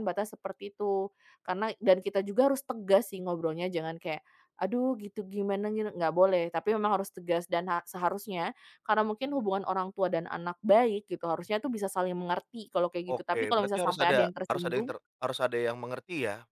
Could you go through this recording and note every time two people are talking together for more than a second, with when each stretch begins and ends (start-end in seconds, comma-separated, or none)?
13.1-14.9